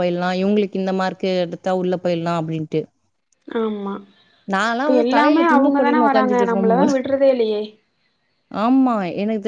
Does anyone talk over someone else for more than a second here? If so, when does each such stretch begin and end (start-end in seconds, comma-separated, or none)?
5.2-6.9